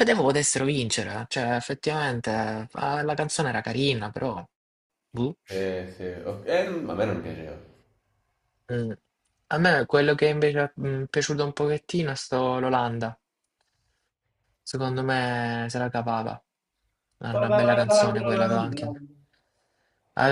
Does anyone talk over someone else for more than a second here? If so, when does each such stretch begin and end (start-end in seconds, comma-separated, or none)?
none